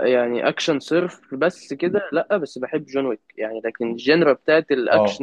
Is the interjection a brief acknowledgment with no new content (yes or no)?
yes